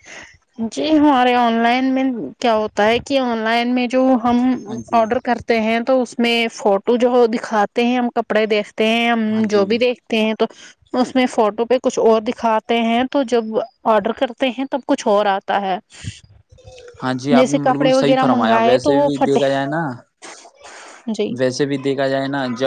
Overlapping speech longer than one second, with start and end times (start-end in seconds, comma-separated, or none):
17.4-19.4